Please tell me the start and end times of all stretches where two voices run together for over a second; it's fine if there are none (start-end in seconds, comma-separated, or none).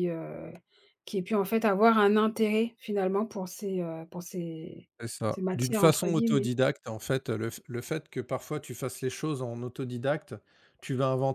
5.3-6.5